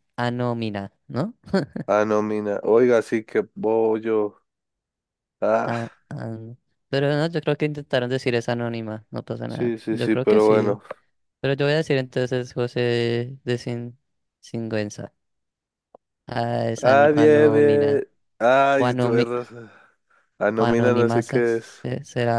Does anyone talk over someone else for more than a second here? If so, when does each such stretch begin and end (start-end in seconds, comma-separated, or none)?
9.5-10.8, 16.8-18.0, 20.6-21.9